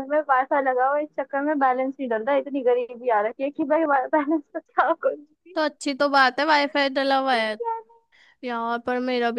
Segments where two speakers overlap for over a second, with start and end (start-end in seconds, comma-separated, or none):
none